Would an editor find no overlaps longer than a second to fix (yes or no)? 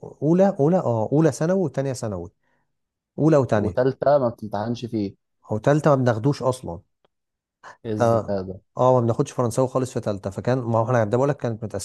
yes